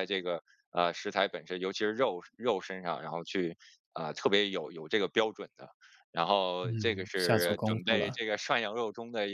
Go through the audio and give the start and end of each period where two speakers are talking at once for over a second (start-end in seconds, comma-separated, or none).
6.6-8.2